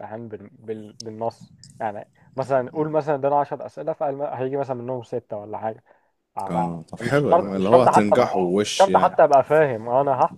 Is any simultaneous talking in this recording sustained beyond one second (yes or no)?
yes